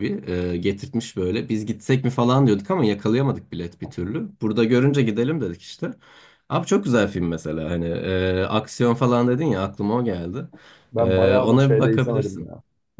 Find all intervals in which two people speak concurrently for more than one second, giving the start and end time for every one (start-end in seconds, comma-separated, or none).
11.0-12.5